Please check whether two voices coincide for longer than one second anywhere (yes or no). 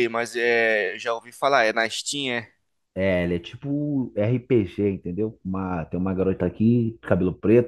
no